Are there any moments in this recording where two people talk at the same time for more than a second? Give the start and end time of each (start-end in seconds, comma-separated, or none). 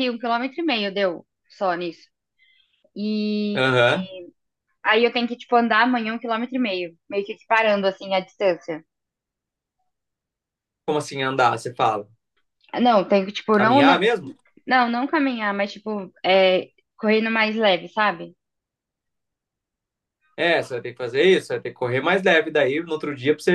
none